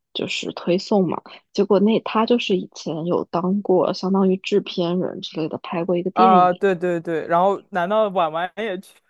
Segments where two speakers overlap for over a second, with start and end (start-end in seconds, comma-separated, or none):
none